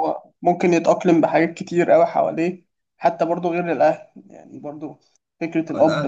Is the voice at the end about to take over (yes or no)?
yes